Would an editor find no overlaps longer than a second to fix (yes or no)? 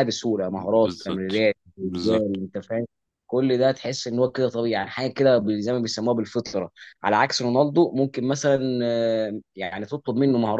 no